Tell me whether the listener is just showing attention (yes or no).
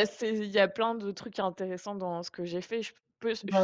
yes